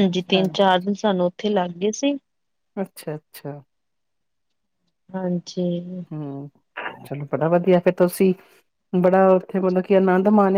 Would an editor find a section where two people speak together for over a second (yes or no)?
no